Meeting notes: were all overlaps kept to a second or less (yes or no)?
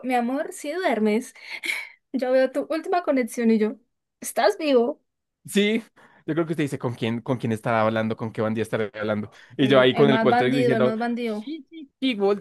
no